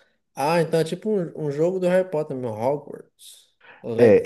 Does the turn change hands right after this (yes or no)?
yes